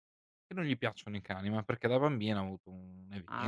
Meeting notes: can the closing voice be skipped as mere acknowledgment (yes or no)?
no